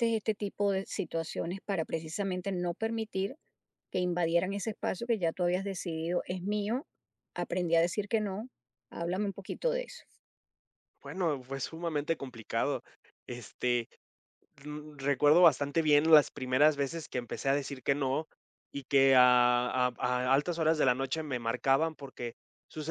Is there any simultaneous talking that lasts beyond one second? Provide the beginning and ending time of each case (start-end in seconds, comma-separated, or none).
none